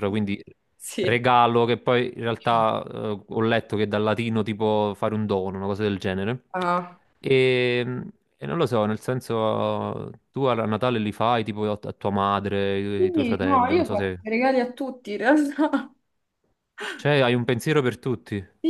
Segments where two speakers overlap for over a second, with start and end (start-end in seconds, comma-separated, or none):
12.9-14.2